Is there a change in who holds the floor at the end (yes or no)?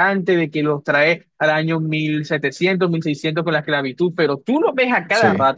no